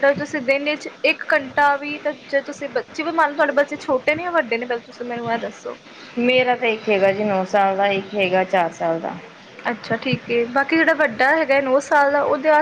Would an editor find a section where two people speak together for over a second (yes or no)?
no